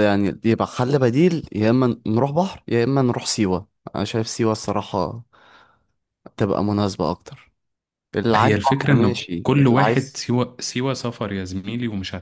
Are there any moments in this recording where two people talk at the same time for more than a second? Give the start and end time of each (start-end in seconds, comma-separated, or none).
8.3-10.2